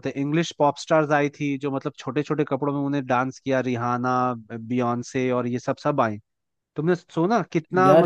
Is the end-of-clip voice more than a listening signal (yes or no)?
no